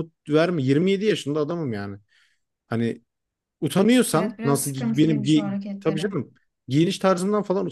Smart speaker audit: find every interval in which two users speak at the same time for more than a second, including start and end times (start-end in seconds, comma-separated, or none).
4.1-6.1